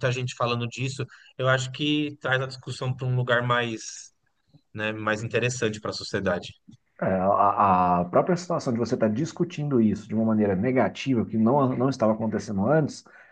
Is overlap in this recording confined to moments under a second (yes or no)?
yes